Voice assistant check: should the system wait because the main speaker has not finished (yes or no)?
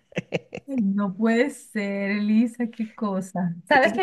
yes